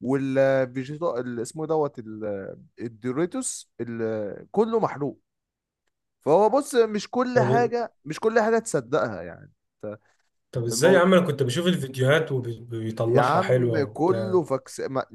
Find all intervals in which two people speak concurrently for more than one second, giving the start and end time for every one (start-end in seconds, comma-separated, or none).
13.1-14.4